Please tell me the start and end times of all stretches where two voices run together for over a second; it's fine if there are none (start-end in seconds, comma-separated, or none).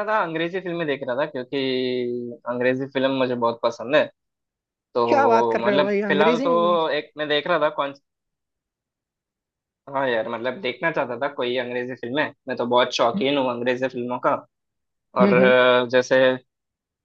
5.1-6.8